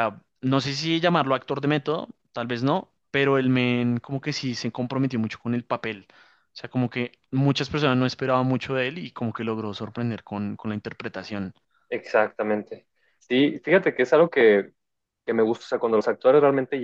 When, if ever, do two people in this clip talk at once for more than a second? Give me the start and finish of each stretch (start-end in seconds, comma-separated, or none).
none